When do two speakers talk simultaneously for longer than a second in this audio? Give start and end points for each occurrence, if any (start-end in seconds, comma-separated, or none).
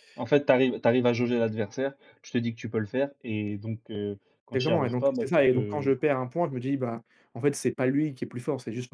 4.5-5.9